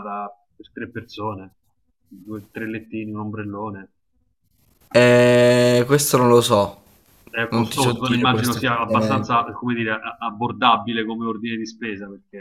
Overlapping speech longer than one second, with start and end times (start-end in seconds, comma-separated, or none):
7.5-9.3